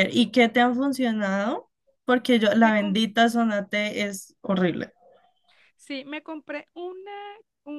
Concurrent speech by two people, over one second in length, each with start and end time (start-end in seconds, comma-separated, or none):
none